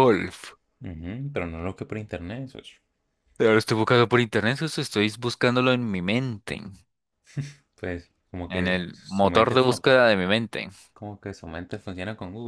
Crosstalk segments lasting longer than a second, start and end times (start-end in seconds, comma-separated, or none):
8.5-9.8